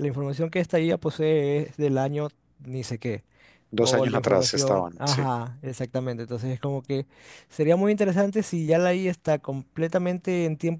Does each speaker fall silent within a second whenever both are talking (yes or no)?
no